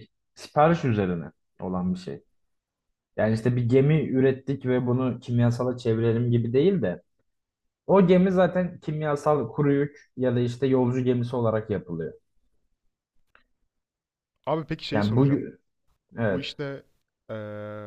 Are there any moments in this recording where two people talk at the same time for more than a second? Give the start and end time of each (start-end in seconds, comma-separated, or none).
none